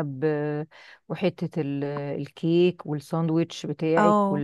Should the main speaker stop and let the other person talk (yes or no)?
yes